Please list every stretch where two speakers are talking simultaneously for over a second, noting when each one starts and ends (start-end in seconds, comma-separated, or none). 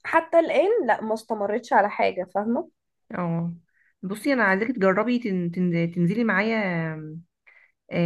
none